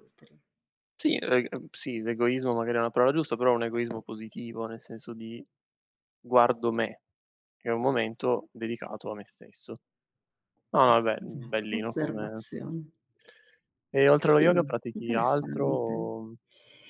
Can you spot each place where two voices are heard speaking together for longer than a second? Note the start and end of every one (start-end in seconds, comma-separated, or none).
10.8-12.4, 14.1-16.1